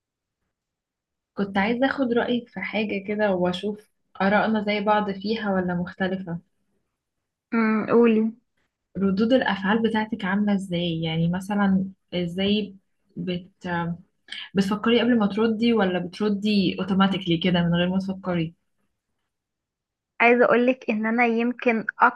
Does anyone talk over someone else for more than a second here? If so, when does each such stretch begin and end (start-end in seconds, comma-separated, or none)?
none